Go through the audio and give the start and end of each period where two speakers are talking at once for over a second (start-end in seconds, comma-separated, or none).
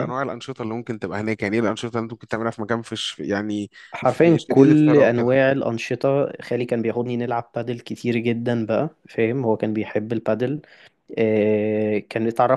4.0-5.4